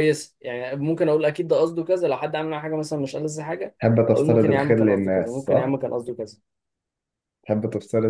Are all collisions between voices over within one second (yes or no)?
no